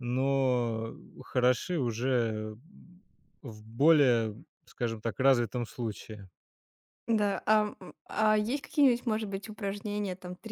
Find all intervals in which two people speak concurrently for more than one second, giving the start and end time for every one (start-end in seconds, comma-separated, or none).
none